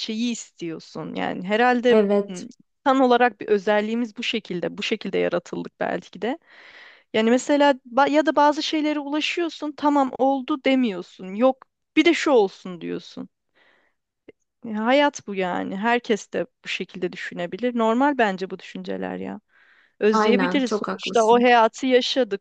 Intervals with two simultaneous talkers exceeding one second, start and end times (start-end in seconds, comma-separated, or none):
20.1-21.5